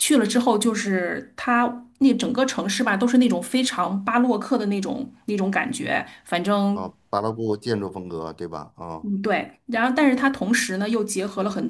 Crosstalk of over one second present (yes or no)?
no